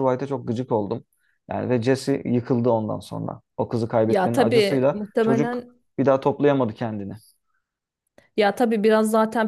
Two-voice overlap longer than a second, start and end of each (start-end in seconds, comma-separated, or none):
4.1-5.8